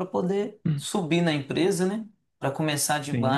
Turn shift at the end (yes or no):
no